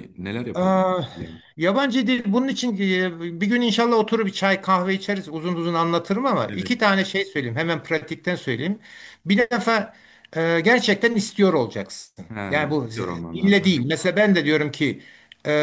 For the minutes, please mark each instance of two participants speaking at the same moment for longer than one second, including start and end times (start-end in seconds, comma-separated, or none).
12.3-13.9